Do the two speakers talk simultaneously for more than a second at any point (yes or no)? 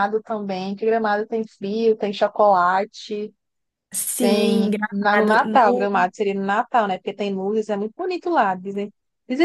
yes